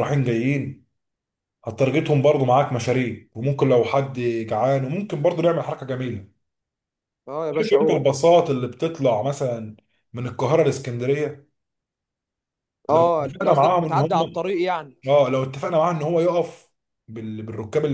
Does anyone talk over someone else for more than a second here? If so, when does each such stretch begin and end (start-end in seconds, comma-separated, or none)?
12.9-14.5